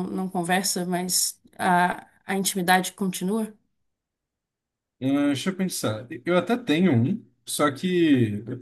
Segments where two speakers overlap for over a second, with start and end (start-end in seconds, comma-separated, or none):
none